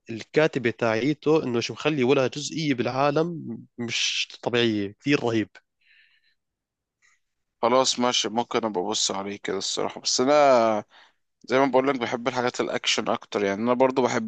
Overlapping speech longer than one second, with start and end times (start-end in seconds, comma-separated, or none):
none